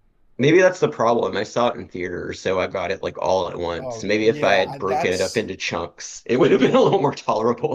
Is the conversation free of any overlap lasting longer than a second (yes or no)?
no